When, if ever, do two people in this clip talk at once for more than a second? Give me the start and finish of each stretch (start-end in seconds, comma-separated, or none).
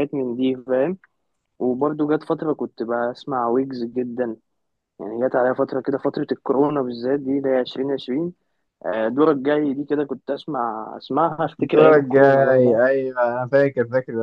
11.6-12.8